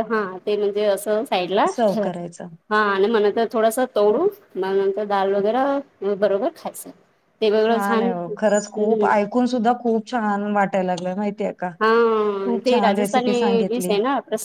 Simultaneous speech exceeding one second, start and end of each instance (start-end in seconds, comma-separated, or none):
11.8-13.9